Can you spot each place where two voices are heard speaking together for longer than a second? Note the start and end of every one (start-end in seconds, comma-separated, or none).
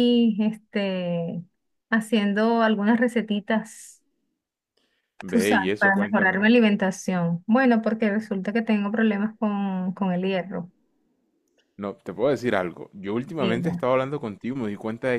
5.3-6.5